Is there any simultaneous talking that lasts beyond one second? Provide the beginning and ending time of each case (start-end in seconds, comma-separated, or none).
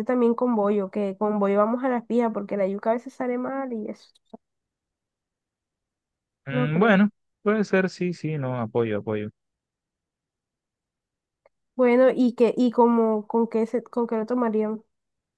none